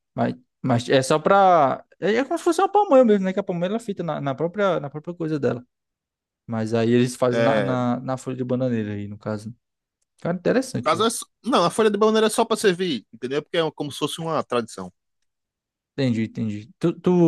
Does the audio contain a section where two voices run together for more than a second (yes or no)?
no